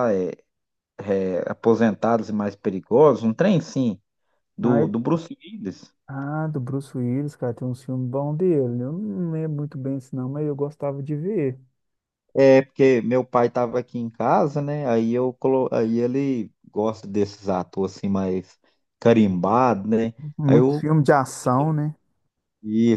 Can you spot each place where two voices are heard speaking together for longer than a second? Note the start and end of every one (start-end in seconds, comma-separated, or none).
none